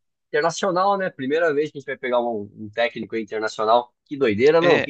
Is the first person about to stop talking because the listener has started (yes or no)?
yes